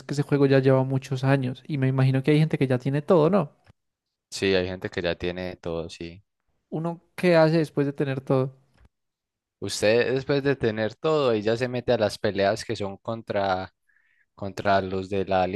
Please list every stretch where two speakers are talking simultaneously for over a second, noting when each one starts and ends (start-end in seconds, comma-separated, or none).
none